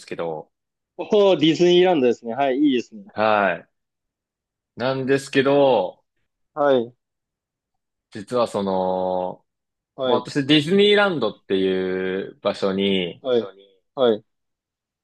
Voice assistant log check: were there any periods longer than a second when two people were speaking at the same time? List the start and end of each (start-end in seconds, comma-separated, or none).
none